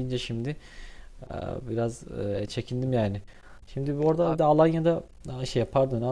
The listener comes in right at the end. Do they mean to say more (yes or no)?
no